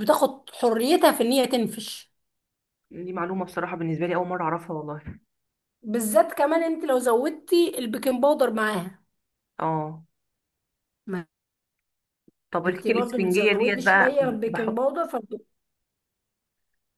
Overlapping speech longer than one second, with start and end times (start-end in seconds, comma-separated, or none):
12.7-14.8